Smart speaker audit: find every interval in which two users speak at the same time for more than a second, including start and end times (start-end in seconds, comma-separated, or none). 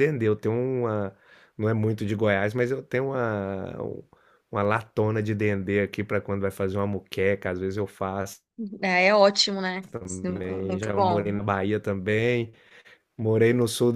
9.9-11.4